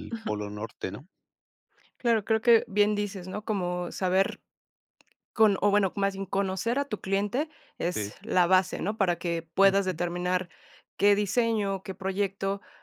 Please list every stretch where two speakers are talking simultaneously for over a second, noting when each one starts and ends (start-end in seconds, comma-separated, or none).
none